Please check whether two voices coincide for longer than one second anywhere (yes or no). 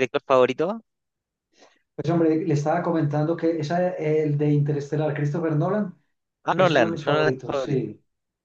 yes